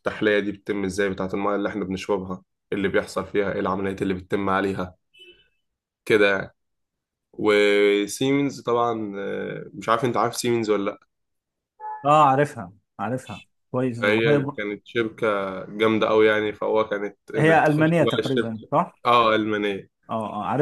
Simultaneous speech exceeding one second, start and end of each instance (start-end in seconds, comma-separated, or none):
17.4-18.9